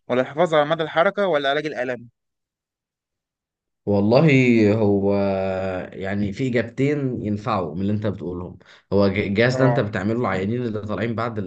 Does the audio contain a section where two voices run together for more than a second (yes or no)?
no